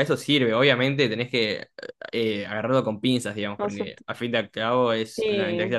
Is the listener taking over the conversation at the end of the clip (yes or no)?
no